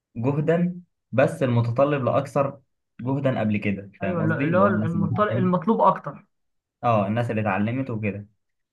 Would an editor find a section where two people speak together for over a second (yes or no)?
yes